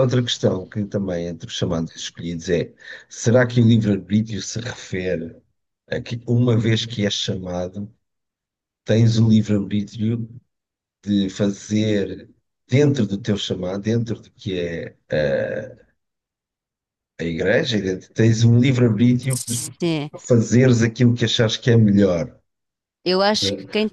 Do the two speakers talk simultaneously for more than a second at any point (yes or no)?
no